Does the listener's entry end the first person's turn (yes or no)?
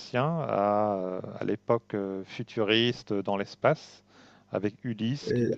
no